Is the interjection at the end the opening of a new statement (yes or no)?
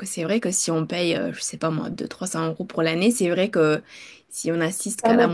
yes